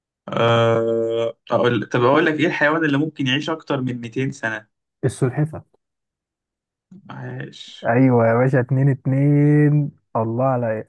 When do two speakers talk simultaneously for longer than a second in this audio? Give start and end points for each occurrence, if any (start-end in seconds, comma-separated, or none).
none